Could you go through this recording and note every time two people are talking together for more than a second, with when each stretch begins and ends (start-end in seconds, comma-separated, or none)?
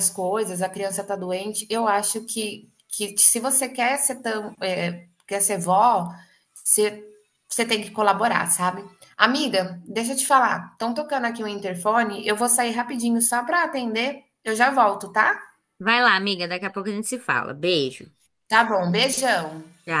none